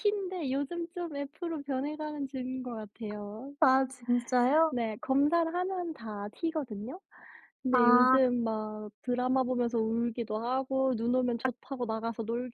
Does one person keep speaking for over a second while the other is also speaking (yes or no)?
no